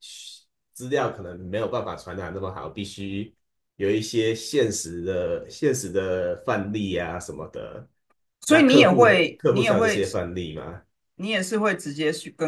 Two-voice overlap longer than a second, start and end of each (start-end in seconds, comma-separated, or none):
8.5-10.0